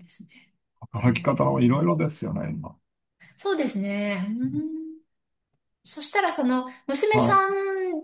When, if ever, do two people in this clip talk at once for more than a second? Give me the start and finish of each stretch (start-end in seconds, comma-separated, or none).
0.9-2.2